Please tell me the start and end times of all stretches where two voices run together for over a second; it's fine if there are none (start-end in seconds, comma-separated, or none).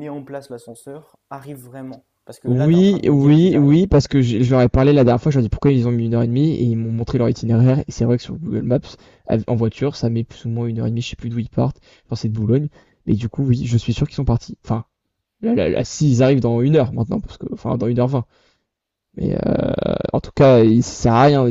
2.5-3.8